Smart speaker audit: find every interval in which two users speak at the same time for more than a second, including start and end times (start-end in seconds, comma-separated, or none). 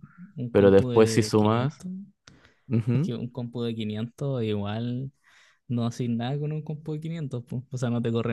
0.5-1.8